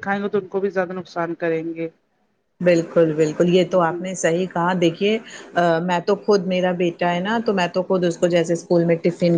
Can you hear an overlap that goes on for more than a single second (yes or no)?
no